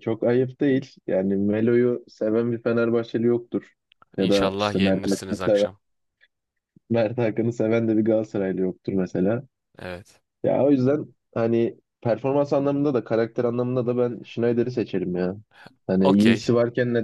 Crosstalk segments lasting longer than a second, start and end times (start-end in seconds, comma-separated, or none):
4.2-5.7